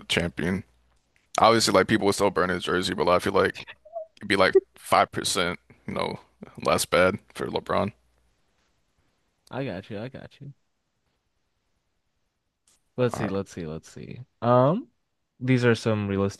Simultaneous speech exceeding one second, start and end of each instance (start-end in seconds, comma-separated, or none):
none